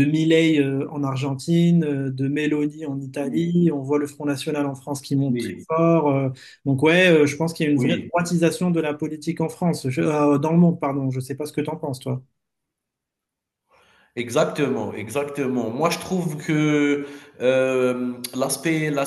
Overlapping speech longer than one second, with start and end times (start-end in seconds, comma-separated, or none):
none